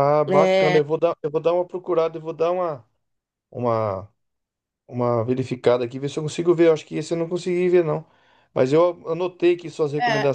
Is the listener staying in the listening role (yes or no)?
yes